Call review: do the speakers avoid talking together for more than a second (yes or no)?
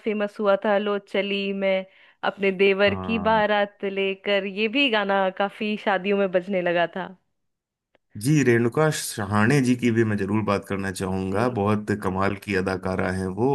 yes